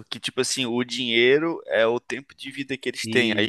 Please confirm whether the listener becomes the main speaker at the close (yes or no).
no